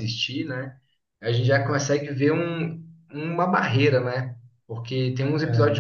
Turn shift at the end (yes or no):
no